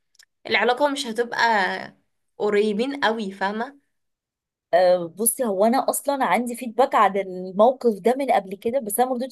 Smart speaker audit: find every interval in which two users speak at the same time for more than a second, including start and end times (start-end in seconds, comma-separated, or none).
none